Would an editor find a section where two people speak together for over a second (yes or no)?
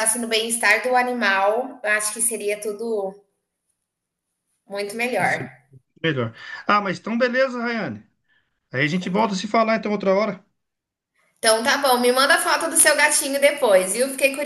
no